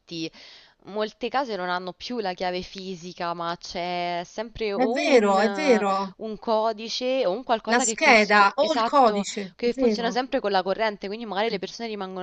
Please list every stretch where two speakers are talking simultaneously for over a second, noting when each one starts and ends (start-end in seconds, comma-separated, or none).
4.8-6.1, 7.7-10.2